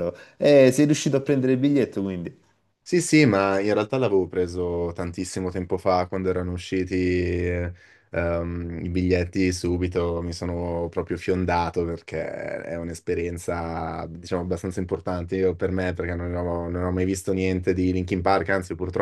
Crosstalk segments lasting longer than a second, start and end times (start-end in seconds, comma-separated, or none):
none